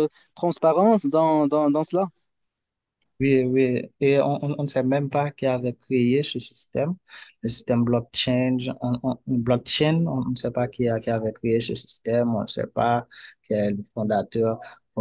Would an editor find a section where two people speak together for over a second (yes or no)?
no